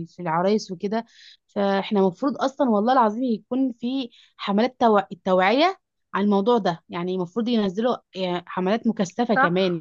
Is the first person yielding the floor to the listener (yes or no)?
yes